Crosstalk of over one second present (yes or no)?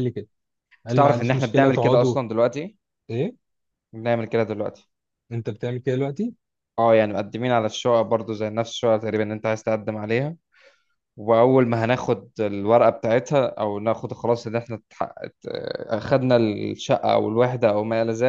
yes